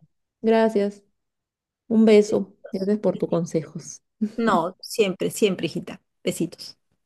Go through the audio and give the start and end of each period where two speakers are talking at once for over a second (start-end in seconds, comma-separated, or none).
none